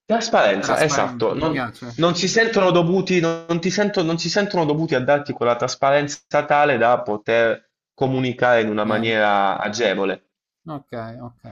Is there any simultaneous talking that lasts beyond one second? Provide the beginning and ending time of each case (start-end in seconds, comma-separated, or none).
0.6-2.0